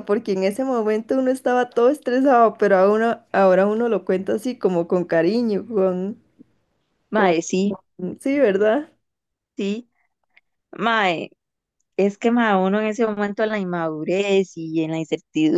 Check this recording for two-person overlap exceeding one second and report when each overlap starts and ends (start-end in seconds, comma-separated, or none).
none